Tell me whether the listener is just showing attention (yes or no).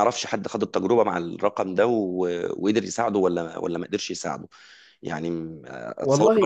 yes